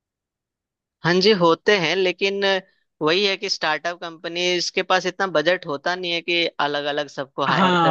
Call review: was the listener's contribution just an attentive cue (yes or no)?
no